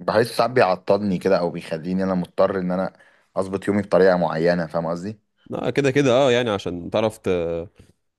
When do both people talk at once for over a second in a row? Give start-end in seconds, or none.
none